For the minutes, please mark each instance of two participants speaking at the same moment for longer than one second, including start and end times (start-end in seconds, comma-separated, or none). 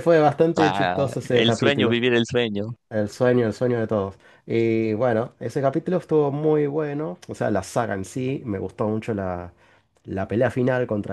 0.6-2.0